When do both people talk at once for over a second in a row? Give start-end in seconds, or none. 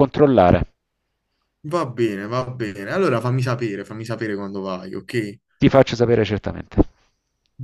none